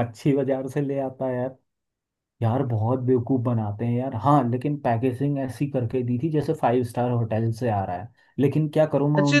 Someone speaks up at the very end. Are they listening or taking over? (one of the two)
taking over